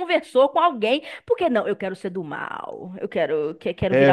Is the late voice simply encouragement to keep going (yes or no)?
no